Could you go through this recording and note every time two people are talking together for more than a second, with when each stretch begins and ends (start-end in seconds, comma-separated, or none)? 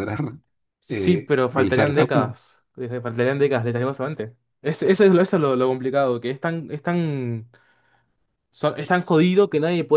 0.9-2.4